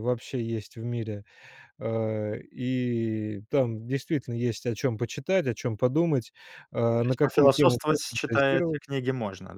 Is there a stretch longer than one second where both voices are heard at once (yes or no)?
yes